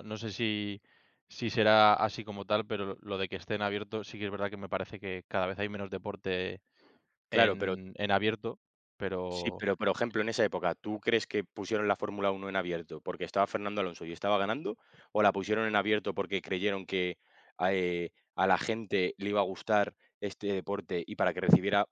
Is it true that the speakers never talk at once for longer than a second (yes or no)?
yes